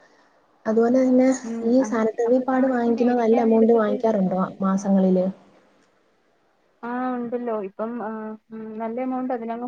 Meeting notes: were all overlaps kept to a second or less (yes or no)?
no